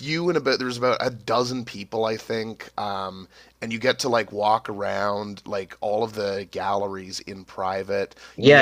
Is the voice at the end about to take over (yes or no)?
yes